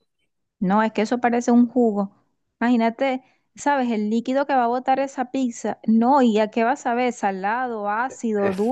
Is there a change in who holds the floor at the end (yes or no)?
yes